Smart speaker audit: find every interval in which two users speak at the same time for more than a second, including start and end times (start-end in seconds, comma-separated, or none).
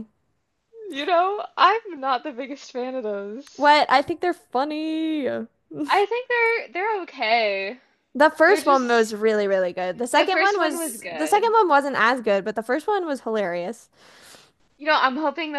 10.2-11.5